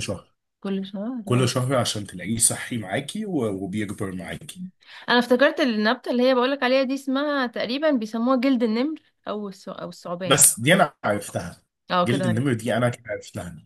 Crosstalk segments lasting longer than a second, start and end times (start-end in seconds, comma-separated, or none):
none